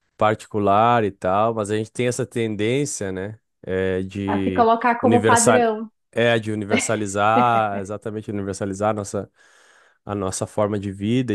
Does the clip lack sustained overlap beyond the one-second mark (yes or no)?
no